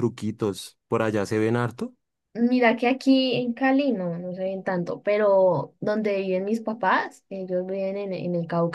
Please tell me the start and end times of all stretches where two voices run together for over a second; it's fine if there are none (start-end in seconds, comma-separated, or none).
none